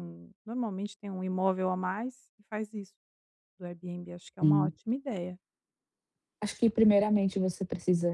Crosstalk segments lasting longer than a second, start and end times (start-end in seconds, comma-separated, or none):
none